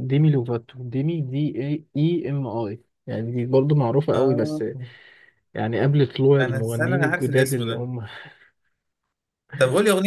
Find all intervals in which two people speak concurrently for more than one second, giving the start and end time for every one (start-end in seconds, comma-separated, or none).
6.4-7.9